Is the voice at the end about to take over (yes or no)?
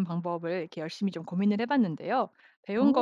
no